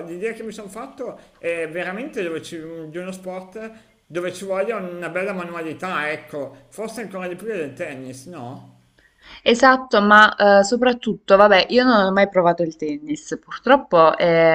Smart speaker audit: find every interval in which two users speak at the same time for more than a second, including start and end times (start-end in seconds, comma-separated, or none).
none